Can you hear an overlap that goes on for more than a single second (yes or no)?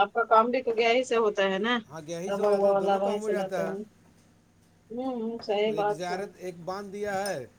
yes